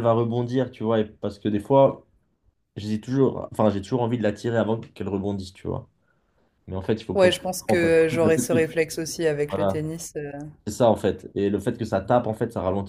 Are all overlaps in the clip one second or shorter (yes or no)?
no